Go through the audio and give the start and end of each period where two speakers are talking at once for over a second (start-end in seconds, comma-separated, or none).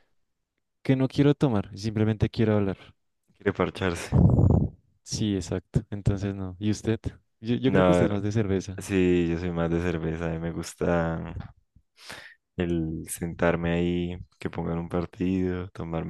none